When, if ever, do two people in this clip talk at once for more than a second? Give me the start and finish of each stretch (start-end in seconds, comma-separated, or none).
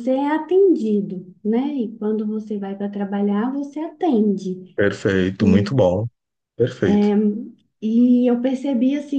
none